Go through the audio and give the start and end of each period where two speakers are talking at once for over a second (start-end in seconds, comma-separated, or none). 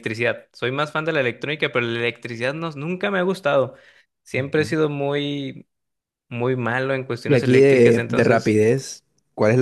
7.2-8.6